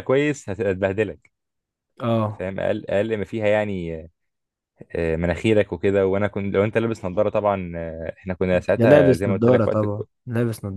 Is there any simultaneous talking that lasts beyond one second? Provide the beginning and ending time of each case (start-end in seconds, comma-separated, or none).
8.8-10.0